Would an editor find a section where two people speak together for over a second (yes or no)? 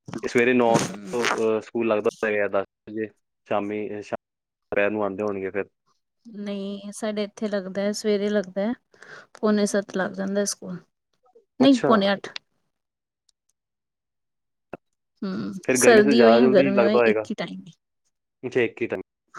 yes